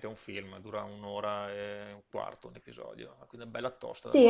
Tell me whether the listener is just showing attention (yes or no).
no